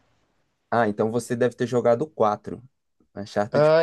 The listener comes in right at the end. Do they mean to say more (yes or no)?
yes